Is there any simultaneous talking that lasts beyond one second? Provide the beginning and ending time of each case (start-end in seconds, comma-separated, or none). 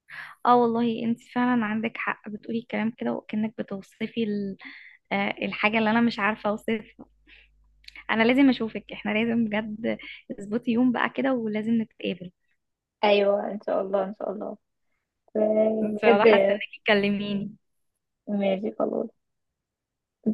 none